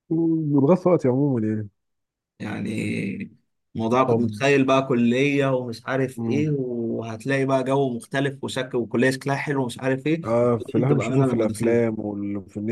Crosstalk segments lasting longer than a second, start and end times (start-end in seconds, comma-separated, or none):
10.2-11.8